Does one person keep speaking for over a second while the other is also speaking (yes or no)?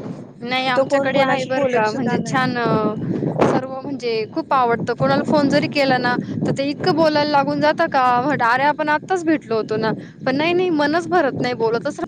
yes